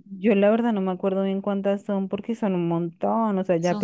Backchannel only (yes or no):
no